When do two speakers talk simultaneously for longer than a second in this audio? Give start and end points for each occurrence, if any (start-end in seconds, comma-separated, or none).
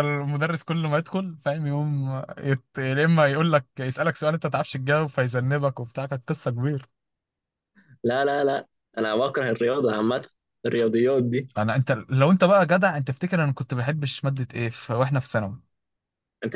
none